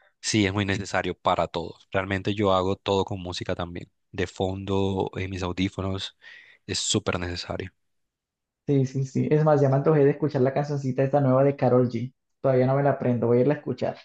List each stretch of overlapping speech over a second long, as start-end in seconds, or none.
none